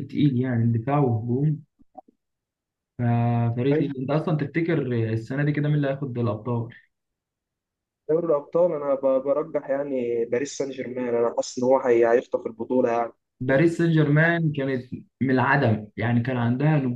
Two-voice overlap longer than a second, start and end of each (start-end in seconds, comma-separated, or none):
none